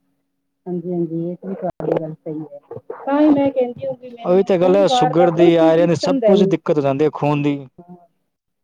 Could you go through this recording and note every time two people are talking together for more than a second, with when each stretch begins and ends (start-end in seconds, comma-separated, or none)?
4.1-6.5